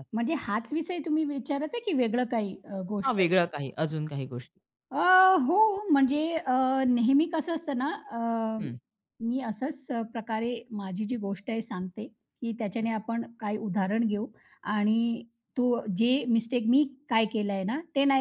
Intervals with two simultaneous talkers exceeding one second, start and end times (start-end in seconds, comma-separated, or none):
none